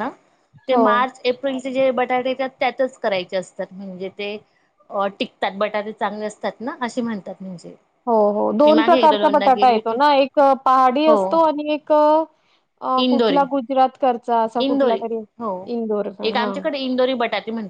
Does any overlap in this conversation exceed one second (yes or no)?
yes